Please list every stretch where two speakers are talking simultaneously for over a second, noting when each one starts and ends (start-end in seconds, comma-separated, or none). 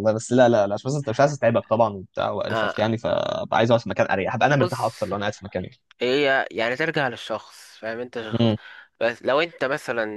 none